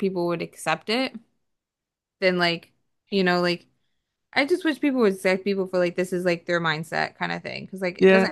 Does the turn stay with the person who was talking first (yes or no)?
no